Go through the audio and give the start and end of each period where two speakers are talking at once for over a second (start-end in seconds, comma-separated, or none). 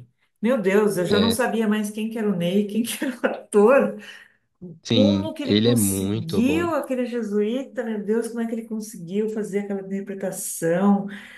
4.9-6.7